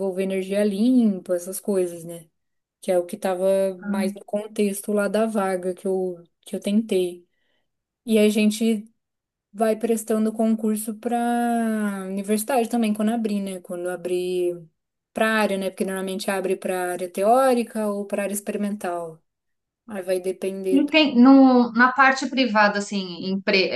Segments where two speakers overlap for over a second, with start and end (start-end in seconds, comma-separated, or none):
none